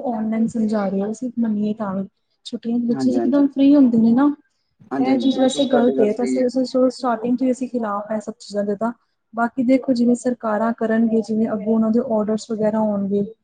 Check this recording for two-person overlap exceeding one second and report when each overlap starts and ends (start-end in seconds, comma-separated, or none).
5.1-6.5